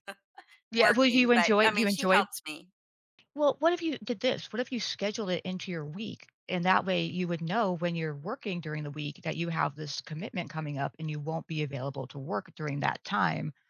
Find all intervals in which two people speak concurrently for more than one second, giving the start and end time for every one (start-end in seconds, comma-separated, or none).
0.7-2.3